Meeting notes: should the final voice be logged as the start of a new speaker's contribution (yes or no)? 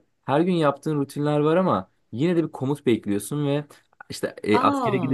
no